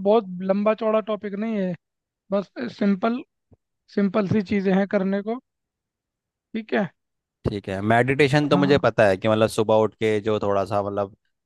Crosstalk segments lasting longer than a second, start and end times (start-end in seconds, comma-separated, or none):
none